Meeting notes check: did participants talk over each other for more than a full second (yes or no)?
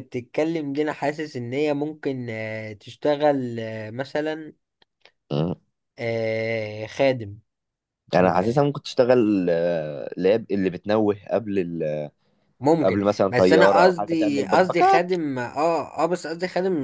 yes